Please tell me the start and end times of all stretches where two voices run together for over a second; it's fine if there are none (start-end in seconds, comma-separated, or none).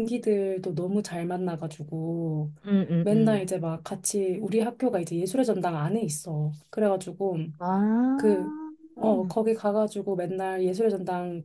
none